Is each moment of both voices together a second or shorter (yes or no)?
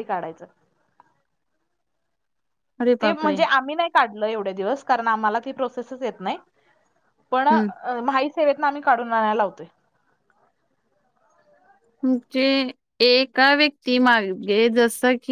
yes